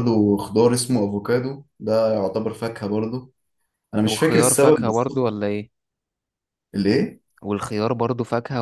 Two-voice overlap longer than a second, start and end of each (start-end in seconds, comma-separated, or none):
4.0-5.3